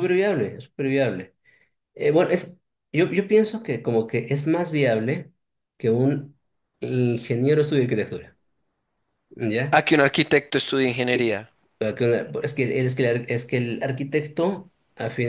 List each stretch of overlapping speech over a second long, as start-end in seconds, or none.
none